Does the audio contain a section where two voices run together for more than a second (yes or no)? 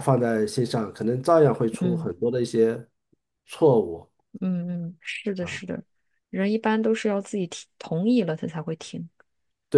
no